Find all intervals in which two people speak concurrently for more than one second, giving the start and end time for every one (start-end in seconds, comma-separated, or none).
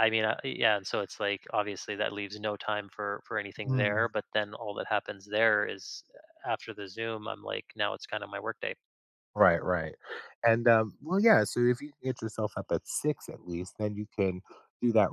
none